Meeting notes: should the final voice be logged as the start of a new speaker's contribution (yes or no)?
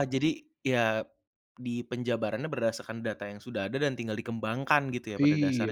yes